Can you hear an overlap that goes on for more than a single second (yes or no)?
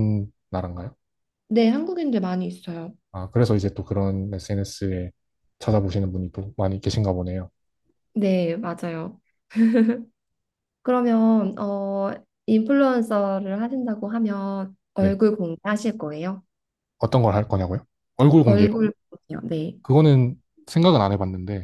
no